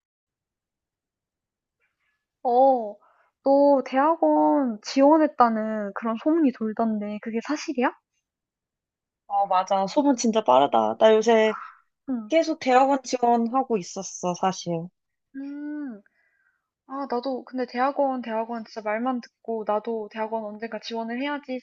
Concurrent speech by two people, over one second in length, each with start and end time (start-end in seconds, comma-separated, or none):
none